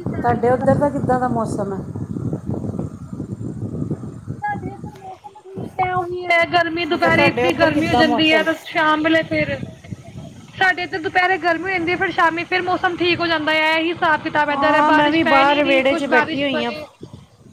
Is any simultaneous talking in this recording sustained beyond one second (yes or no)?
yes